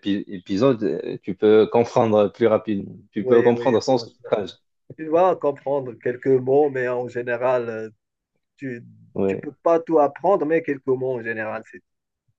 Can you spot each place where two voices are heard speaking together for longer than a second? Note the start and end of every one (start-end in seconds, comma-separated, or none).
3.2-4.4